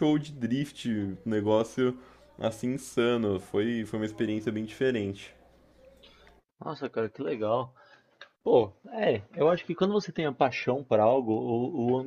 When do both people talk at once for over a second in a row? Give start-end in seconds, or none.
none